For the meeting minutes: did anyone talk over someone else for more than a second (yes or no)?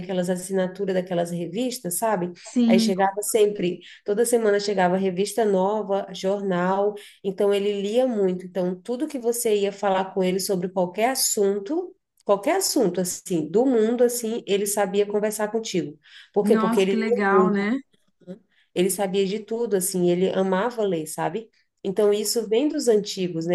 yes